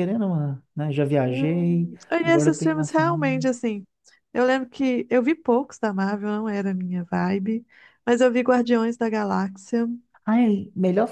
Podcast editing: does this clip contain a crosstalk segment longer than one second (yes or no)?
yes